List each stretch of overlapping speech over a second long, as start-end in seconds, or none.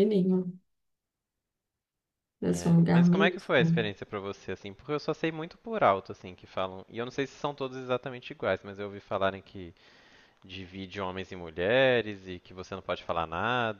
2.5-3.8